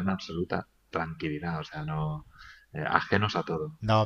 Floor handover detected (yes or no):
yes